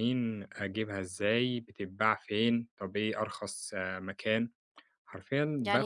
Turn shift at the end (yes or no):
yes